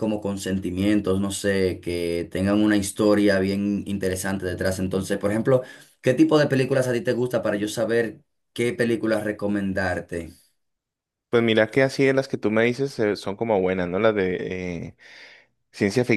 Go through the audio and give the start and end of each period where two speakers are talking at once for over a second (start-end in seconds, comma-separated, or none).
none